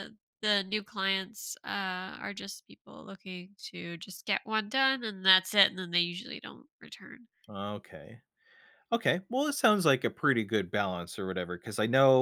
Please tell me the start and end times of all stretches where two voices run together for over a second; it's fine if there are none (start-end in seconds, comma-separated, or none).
none